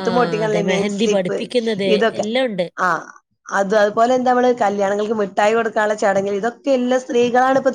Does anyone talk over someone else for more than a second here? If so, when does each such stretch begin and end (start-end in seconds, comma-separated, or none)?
none